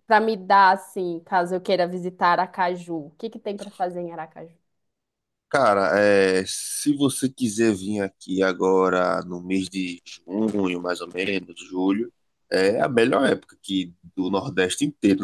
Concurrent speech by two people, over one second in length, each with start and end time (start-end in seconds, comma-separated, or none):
none